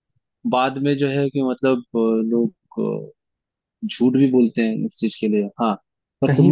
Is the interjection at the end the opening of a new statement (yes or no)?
no